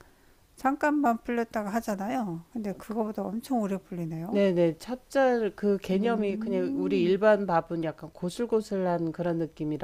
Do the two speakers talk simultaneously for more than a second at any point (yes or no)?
yes